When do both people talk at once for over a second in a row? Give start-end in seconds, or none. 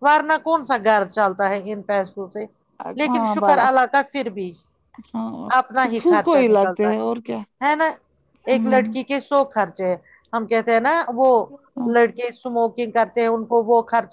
5.6-7.4